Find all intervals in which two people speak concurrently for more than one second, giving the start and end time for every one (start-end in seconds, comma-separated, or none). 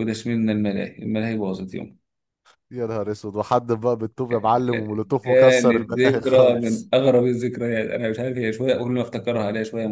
5.2-6.9